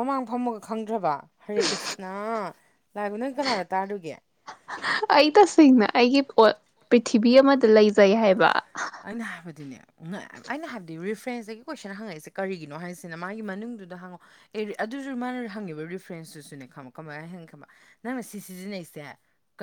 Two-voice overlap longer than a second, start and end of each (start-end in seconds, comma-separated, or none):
none